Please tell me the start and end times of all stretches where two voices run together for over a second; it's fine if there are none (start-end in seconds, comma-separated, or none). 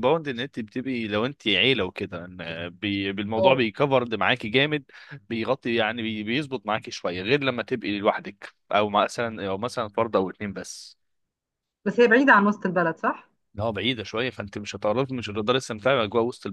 none